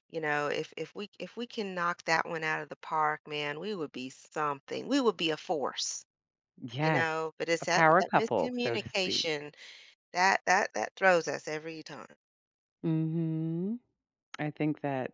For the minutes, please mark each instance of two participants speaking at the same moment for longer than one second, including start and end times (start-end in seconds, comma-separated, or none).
6.8-9.3